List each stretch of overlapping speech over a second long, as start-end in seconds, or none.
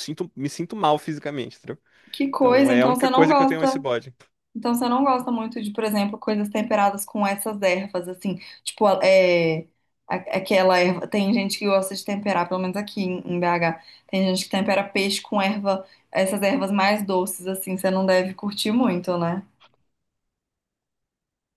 2.4-3.8